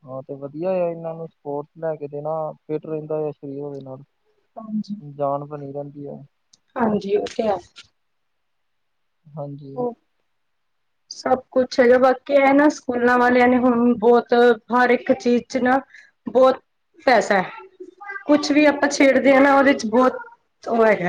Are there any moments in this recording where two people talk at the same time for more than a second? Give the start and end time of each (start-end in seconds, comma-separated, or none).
none